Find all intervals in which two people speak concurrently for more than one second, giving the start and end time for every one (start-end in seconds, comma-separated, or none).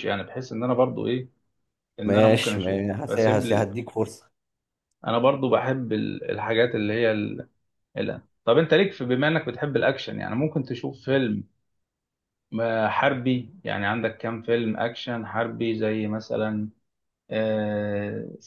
2.0-3.7